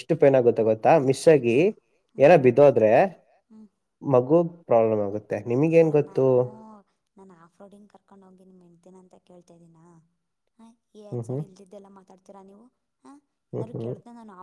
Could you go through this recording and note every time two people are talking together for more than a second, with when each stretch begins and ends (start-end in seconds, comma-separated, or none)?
none